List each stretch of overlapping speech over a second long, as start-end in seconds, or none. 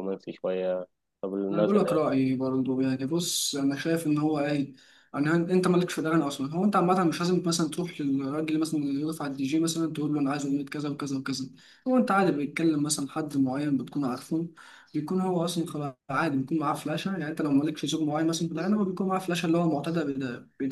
none